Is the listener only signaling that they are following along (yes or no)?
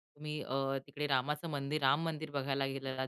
yes